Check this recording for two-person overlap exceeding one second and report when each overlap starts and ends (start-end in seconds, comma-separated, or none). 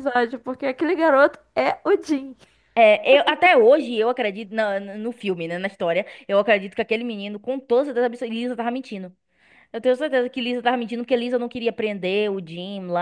none